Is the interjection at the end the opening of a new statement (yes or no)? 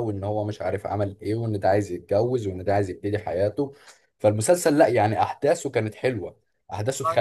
no